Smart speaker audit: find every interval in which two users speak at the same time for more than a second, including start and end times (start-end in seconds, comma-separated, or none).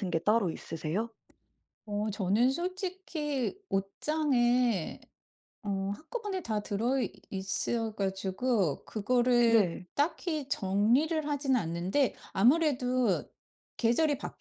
none